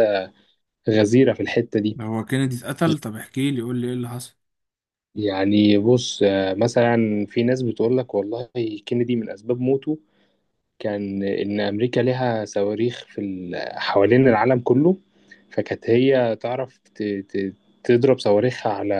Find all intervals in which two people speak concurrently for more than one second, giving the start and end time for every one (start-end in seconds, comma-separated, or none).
none